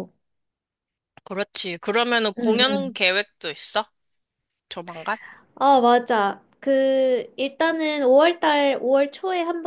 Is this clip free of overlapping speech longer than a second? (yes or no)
yes